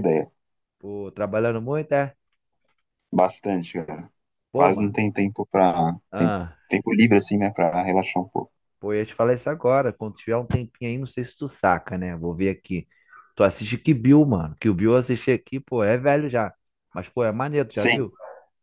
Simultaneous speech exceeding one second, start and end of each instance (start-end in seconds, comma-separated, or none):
none